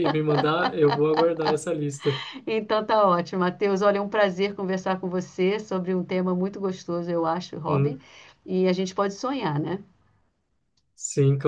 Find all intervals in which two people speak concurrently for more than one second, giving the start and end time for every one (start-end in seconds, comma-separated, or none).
none